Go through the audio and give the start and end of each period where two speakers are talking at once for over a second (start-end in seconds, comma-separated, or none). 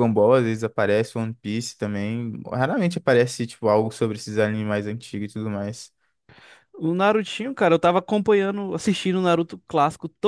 none